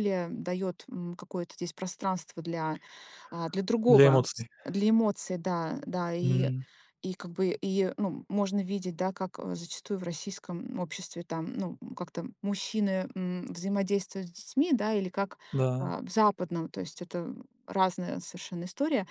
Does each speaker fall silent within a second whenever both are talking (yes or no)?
yes